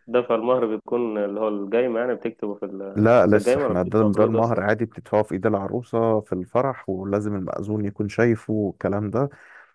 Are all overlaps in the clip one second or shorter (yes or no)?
no